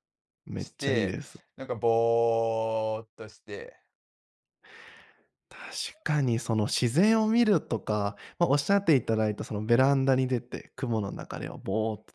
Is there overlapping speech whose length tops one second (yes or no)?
no